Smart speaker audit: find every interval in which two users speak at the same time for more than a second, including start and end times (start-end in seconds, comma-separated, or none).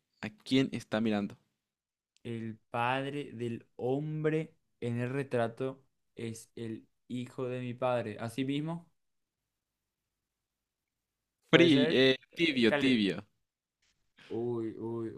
11.5-13.1